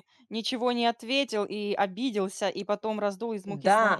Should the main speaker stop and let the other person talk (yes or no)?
yes